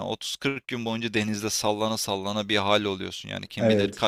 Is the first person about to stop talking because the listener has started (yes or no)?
no